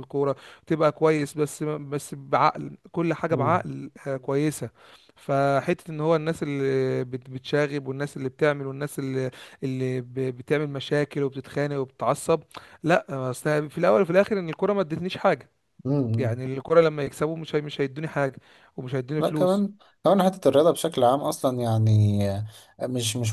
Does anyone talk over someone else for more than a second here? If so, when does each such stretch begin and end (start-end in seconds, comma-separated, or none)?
none